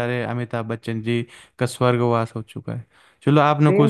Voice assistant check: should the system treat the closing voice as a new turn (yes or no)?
yes